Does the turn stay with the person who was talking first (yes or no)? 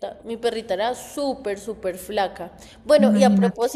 yes